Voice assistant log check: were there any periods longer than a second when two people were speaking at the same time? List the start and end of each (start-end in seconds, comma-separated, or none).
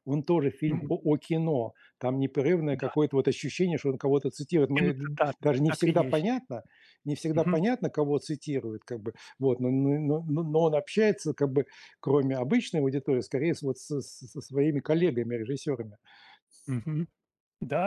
4.7-6.4